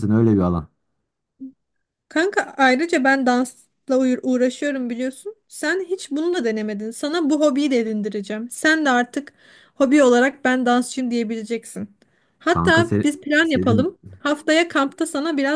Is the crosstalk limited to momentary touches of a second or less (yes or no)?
no